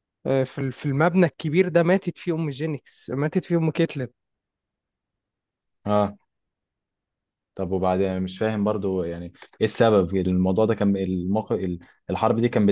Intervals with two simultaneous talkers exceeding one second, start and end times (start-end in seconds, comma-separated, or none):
none